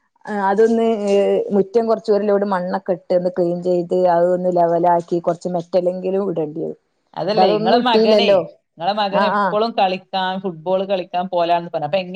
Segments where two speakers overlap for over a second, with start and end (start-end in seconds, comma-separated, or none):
none